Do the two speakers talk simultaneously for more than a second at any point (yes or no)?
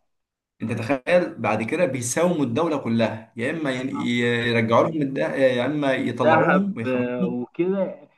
yes